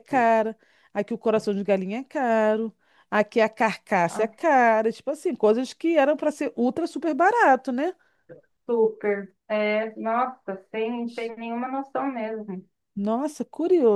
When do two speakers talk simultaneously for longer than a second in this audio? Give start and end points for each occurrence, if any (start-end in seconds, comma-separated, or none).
none